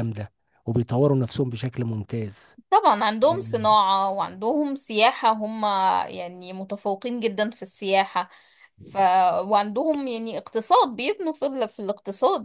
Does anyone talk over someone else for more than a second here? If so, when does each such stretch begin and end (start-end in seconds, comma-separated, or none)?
none